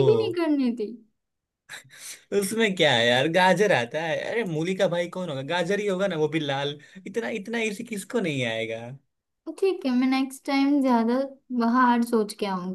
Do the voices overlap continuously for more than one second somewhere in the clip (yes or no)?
no